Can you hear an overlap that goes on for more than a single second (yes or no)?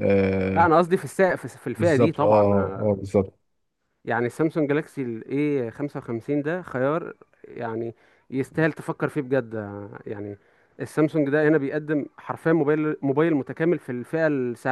yes